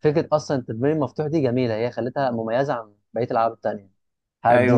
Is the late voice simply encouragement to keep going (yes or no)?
no